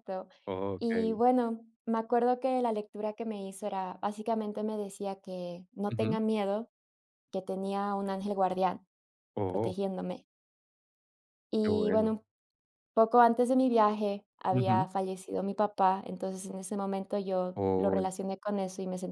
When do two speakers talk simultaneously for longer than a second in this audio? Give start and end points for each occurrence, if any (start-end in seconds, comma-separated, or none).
none